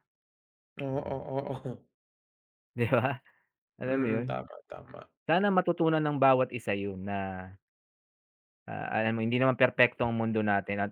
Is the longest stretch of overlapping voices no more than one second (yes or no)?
yes